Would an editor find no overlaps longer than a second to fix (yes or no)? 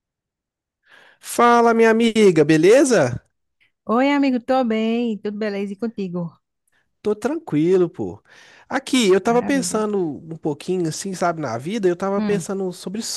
yes